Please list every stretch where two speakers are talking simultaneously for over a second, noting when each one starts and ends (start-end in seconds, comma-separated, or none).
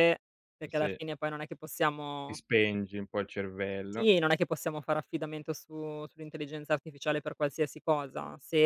none